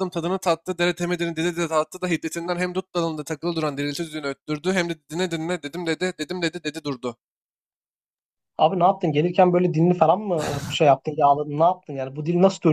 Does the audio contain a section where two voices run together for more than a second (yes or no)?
no